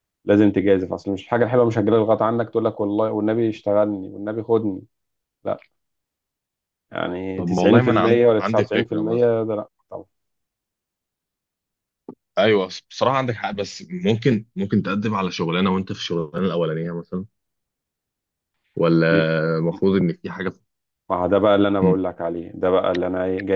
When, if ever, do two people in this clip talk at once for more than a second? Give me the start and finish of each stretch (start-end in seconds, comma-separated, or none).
7.4-9.3